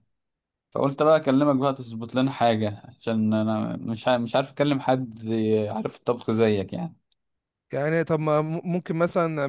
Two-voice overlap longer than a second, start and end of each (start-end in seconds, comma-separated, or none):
none